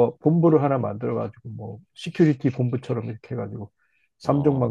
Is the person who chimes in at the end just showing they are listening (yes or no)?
yes